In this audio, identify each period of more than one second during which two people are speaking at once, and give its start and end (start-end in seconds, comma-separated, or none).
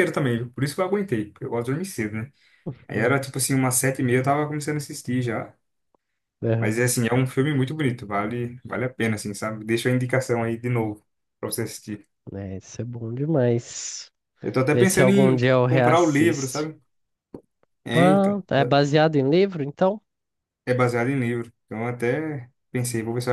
14.7-16.7